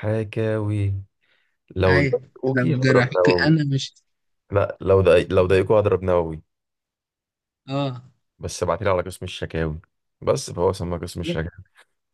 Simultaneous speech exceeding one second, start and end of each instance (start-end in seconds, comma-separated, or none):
1.9-3.5